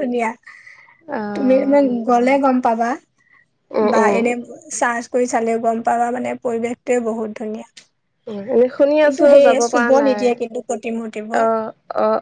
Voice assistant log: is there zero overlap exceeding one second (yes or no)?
no